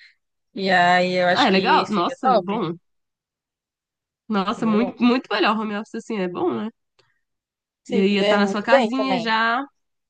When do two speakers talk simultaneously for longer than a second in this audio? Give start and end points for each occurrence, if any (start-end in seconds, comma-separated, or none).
1.3-2.6, 7.9-9.3